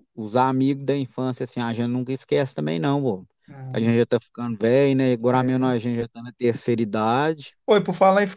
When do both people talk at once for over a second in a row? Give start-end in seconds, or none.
none